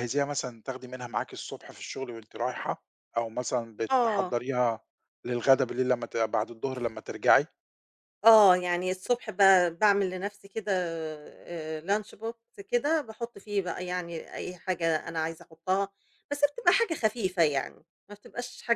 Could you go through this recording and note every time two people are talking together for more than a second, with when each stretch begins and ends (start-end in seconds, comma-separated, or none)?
none